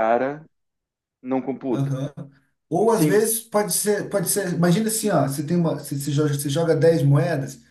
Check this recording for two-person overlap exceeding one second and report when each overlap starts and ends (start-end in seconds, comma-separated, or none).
none